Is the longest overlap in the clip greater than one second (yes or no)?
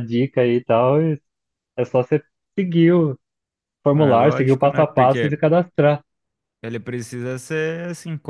yes